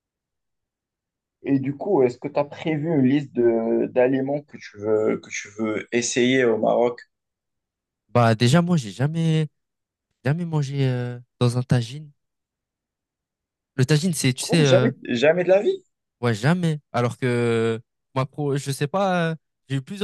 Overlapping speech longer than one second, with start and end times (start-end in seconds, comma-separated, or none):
none